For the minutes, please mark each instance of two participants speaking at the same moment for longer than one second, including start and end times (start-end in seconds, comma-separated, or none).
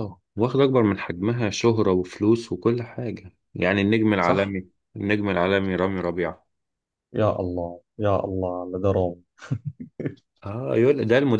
none